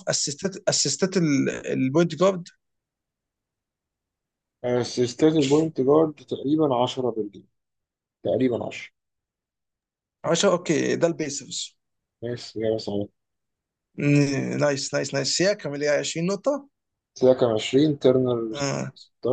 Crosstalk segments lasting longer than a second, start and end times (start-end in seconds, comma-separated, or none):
none